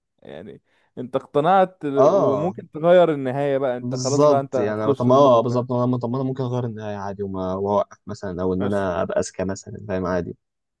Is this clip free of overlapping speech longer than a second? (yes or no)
no